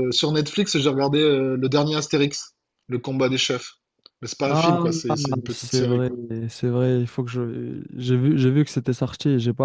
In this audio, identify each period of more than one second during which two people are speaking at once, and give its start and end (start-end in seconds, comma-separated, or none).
none